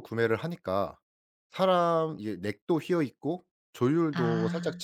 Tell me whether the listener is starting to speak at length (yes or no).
no